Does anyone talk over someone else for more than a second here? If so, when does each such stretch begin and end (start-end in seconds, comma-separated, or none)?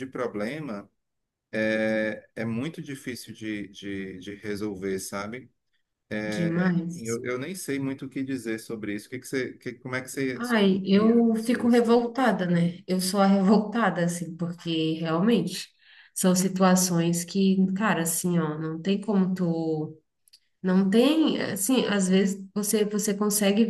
10.3-12.0